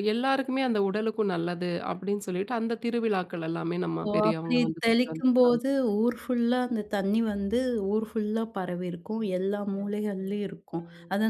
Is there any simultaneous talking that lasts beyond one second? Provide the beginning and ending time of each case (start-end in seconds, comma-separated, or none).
4.0-5.6